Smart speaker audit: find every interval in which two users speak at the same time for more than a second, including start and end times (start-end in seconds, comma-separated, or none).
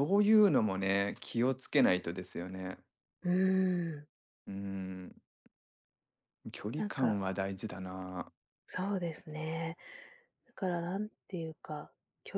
none